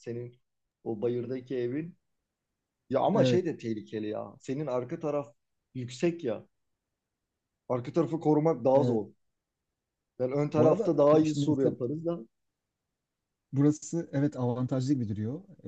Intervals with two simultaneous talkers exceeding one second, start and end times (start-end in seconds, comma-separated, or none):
10.6-11.8